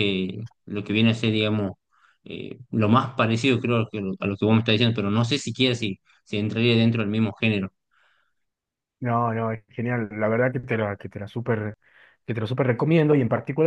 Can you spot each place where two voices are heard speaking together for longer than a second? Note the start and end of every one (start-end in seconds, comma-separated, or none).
none